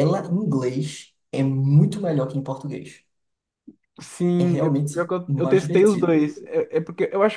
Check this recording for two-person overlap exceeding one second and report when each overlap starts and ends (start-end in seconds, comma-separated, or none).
4.4-6.3